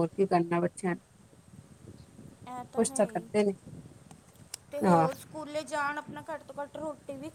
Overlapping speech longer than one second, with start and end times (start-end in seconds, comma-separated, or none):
none